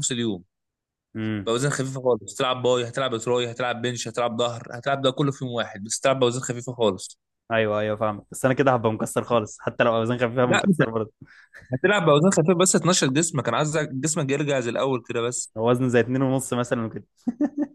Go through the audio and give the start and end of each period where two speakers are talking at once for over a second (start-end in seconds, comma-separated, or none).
none